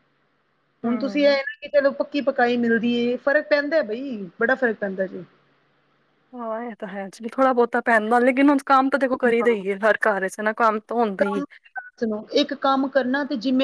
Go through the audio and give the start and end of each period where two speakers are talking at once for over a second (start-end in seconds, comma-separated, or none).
none